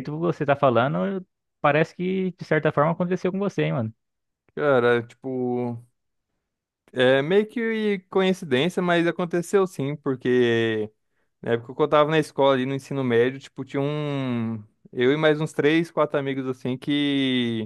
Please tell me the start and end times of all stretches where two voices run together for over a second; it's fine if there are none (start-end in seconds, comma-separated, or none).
none